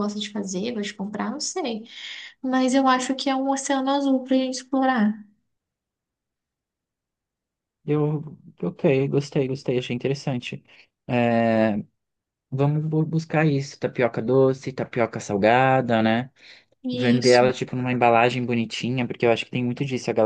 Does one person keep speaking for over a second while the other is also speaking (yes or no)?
no